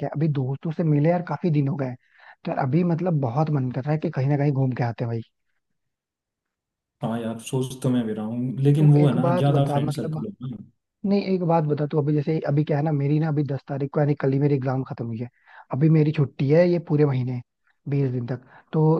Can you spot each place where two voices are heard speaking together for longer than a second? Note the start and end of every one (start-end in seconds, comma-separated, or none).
8.8-10.2